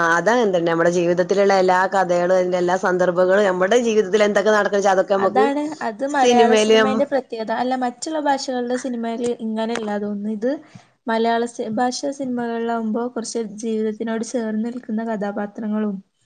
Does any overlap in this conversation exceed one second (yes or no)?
no